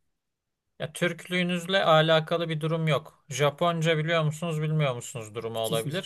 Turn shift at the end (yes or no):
no